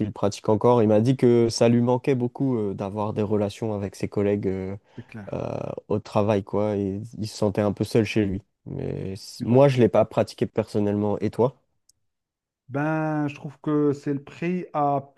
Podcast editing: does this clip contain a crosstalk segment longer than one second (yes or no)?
no